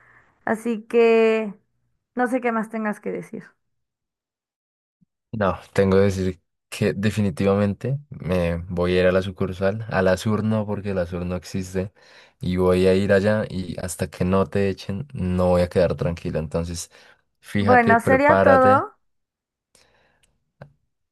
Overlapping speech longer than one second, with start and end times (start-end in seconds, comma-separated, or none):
17.6-18.9